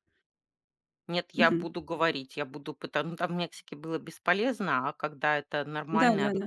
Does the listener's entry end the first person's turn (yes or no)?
no